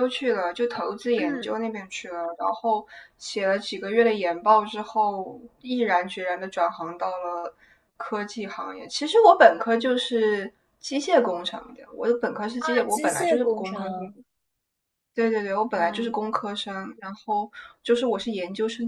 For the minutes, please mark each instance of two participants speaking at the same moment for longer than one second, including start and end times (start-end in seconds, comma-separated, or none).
12.6-14.0